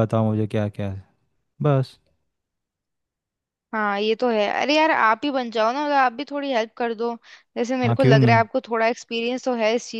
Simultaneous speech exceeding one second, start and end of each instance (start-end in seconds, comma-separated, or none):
none